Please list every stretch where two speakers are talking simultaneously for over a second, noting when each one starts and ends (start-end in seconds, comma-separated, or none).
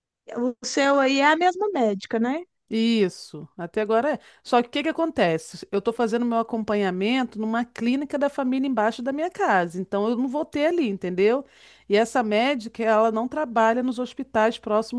none